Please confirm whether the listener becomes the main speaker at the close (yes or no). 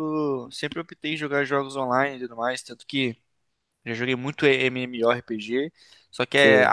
no